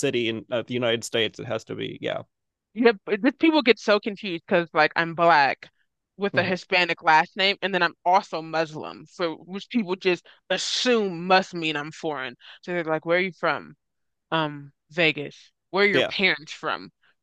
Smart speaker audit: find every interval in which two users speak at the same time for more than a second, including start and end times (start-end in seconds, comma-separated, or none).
none